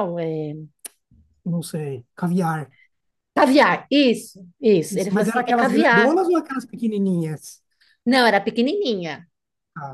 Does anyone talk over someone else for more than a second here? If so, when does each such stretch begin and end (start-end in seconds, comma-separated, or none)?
4.9-6.2